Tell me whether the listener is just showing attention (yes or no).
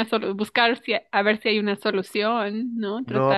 no